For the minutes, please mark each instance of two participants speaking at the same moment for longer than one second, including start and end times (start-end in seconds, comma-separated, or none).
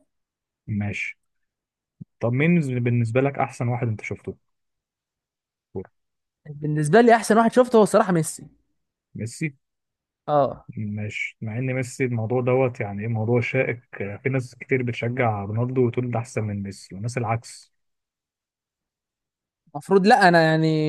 none